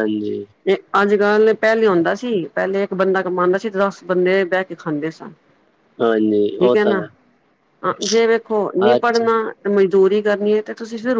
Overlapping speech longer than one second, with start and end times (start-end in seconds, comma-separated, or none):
none